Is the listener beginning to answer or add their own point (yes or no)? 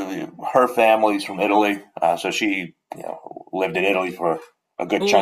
yes